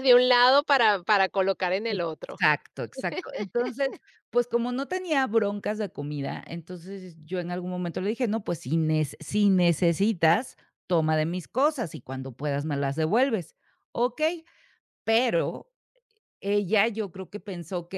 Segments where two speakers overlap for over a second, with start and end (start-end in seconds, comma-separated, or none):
none